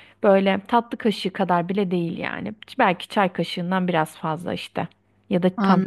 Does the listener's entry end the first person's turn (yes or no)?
no